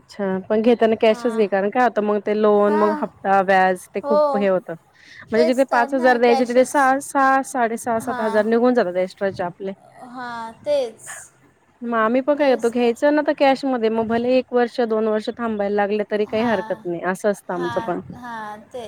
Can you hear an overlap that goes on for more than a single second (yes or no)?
yes